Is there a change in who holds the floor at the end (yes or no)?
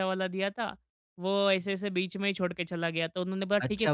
yes